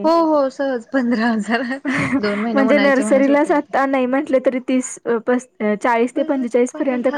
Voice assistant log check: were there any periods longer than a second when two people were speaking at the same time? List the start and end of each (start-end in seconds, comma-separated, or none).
2.5-3.7